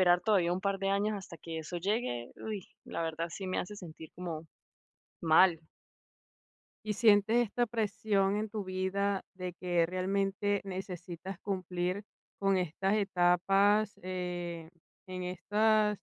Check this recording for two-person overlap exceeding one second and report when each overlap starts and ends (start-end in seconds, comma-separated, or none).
none